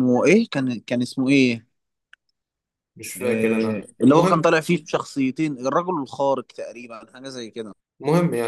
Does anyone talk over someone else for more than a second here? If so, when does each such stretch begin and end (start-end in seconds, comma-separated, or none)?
3.2-4.5